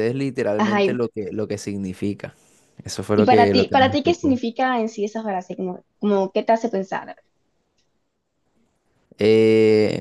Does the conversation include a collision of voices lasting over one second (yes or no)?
yes